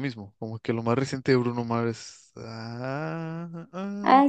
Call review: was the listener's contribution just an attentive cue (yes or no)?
no